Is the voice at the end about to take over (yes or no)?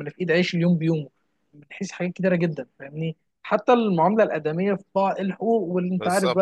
no